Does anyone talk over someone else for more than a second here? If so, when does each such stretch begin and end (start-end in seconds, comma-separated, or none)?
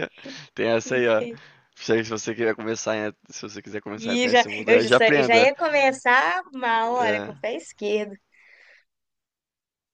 4.0-5.5